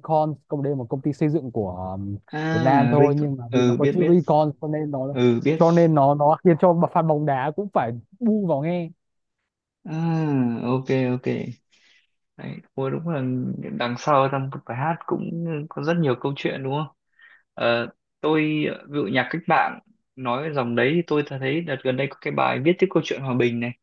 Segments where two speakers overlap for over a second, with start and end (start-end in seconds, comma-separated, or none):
2.5-4.2